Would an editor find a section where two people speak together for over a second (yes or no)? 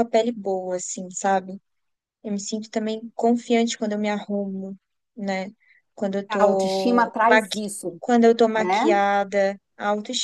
yes